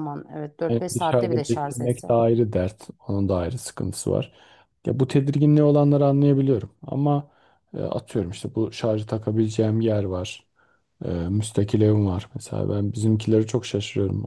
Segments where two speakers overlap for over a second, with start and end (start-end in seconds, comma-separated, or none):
0.7-2.1